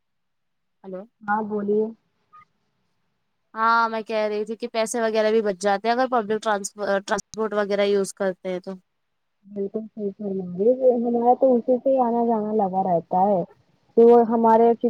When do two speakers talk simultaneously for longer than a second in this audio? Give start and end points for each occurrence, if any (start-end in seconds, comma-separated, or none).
none